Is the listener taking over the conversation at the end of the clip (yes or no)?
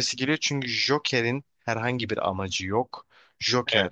no